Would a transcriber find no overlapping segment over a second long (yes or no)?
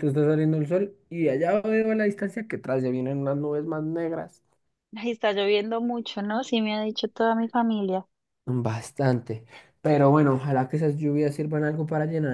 yes